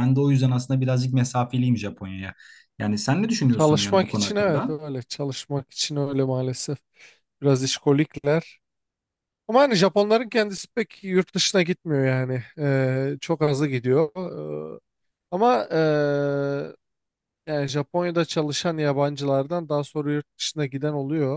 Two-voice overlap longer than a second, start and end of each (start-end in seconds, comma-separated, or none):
3.5-4.8